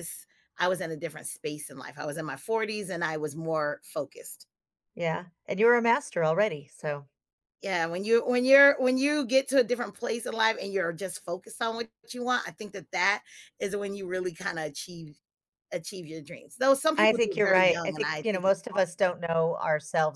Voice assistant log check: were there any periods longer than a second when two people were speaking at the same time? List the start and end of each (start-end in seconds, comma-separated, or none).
17.0-18.6